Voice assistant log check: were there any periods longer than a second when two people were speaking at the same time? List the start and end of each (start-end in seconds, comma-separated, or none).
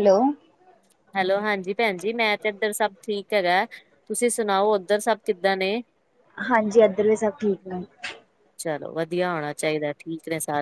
none